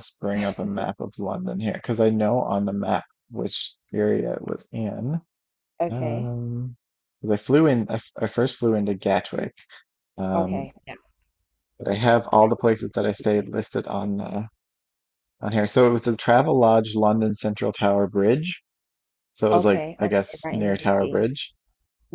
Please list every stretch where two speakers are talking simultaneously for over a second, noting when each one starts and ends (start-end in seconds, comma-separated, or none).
19.5-21.3